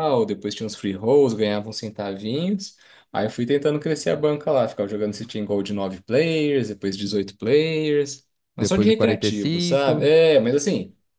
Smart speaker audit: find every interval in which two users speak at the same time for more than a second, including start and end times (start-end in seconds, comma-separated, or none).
8.6-10.1